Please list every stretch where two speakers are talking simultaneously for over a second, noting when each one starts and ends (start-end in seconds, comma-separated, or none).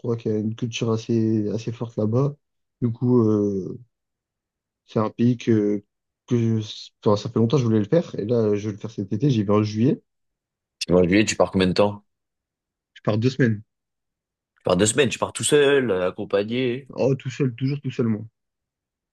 none